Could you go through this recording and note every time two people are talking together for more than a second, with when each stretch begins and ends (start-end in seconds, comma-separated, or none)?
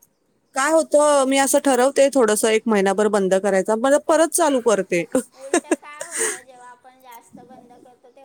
none